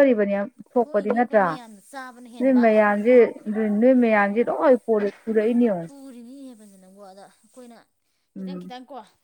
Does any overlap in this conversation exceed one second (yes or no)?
yes